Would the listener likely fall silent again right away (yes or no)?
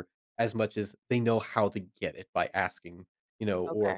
yes